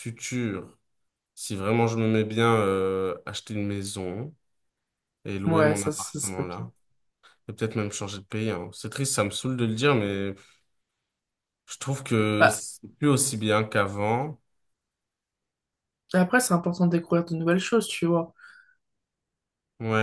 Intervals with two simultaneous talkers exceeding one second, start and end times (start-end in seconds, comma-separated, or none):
5.5-6.7